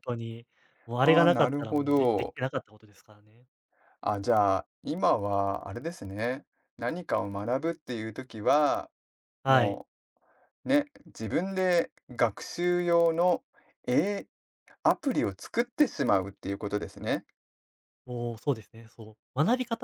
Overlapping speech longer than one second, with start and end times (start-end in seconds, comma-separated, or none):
1.0-2.4